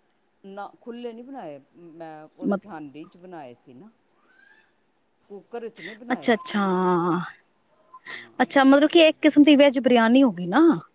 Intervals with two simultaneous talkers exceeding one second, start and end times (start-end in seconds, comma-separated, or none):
none